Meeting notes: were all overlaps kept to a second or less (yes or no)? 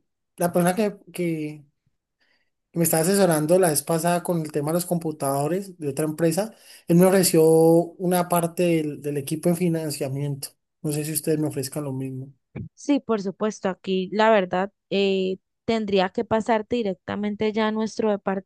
yes